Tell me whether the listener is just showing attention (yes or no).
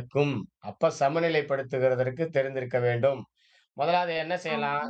no